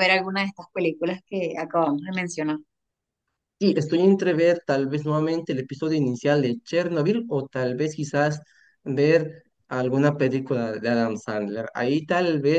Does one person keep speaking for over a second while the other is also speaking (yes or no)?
no